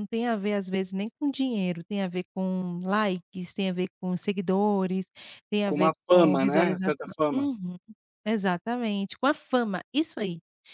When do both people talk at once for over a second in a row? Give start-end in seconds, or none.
5.7-7.5